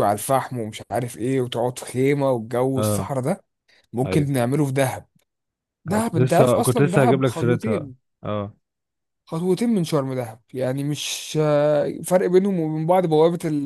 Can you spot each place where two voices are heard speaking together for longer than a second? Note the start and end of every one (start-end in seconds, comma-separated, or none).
5.9-8.0